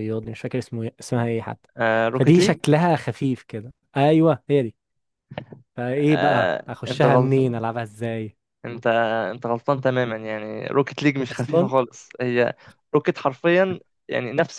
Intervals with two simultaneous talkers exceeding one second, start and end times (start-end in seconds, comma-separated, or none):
6.0-7.5